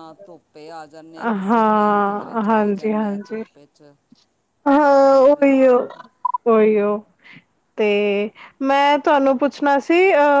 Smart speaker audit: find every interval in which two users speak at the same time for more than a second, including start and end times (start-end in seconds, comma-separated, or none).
1.4-3.4